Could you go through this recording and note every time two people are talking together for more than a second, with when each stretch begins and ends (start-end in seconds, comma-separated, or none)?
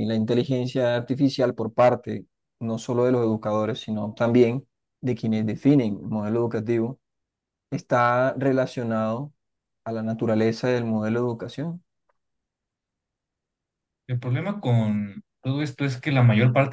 none